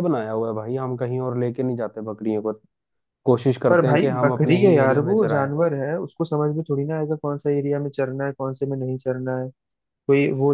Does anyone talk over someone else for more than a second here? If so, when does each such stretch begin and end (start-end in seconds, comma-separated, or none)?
3.7-5.5